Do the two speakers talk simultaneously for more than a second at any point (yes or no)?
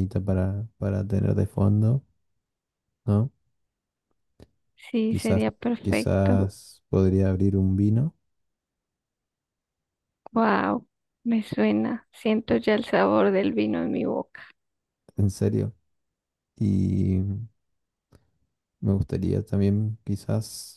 yes